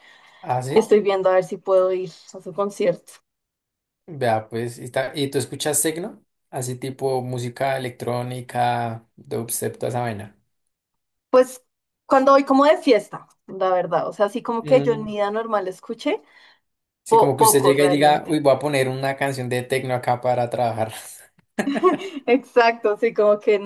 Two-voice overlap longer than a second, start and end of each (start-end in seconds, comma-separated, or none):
17.1-18.4